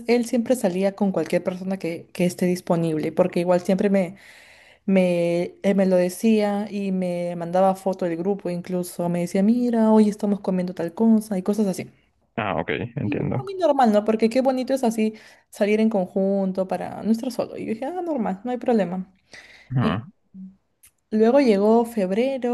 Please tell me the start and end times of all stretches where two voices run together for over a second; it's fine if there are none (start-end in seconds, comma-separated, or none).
none